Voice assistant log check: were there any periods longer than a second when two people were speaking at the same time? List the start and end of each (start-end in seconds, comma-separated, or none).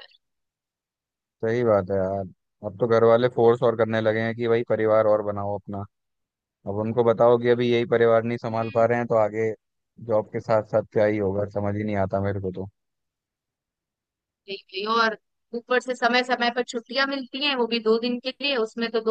none